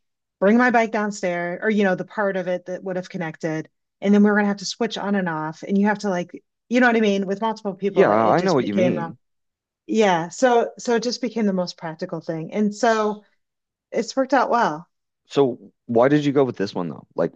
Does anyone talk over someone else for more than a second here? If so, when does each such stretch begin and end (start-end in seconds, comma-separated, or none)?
7.8-9.2